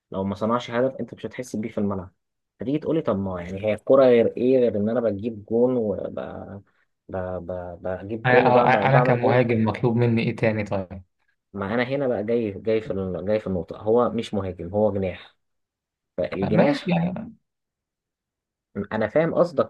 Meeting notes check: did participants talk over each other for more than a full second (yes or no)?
yes